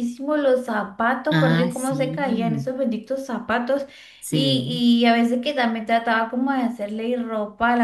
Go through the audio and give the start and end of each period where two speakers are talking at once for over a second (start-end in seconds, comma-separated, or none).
1.3-2.7